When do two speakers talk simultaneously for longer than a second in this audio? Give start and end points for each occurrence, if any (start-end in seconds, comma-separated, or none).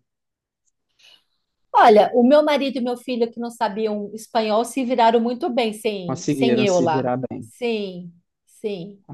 6.0-7.5